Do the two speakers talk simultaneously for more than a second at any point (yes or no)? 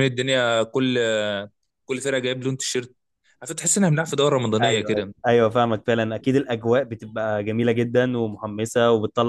no